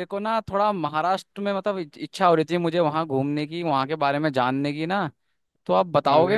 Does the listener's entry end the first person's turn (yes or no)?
yes